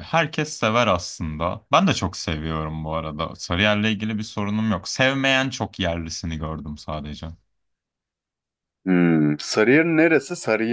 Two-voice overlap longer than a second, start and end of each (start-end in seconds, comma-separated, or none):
none